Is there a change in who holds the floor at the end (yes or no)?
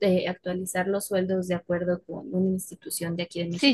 yes